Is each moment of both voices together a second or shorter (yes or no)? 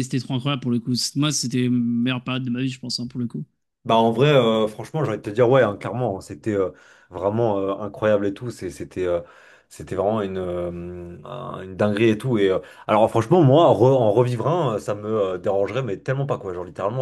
yes